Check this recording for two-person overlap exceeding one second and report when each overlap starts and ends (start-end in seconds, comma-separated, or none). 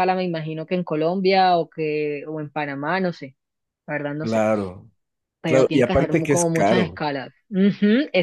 5.4-7.0